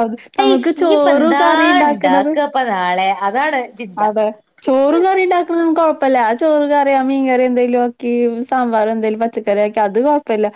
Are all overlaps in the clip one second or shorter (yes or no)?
yes